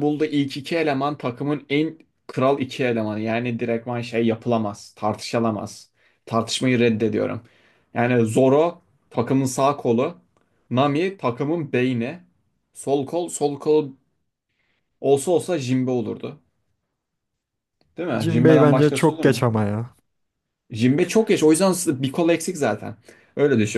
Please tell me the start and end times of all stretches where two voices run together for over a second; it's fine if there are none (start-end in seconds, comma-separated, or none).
18.2-19.4